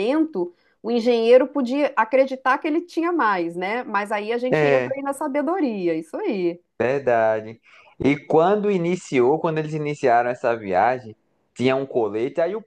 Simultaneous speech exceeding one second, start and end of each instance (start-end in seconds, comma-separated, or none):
none